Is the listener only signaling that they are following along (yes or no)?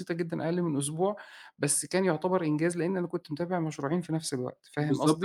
no